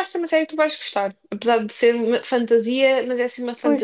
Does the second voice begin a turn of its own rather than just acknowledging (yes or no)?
yes